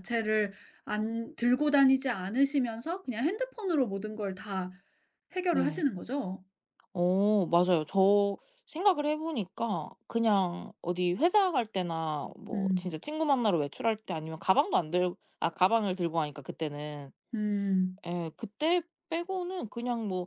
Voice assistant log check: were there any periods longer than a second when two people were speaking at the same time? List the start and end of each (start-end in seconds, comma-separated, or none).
none